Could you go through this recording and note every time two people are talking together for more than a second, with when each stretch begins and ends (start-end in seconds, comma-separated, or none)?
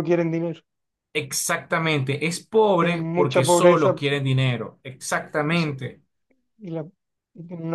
2.8-4.0